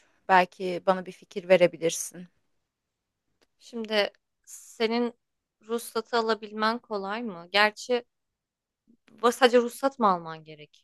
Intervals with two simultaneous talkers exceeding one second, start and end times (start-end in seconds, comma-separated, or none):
none